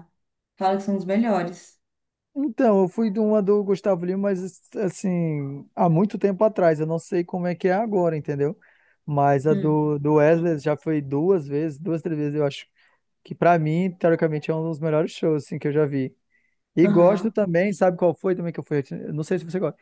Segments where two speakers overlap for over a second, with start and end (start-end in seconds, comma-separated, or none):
none